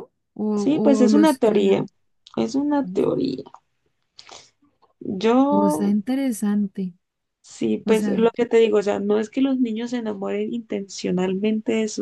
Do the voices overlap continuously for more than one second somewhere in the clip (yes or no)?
yes